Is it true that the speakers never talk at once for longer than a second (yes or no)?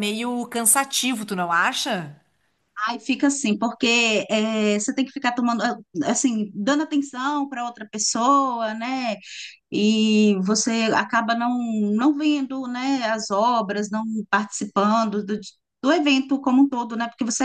yes